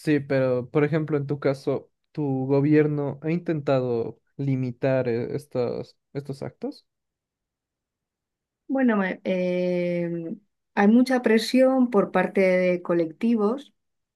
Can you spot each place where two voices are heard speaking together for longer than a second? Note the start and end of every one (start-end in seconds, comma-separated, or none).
none